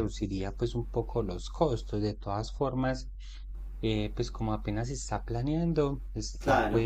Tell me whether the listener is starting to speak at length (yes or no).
no